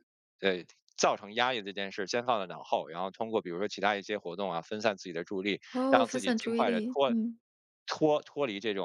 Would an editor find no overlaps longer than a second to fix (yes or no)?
no